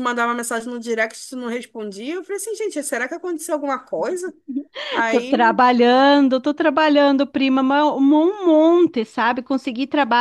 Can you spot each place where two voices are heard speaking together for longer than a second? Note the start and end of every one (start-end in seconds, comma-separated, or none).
none